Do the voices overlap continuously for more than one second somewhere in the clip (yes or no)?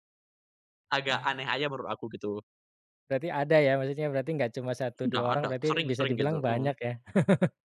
yes